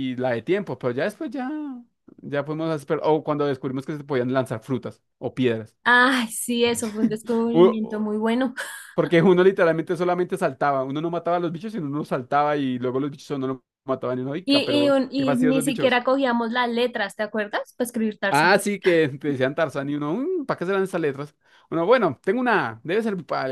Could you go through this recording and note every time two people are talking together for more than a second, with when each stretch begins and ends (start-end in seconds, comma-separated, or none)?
14.4-16.0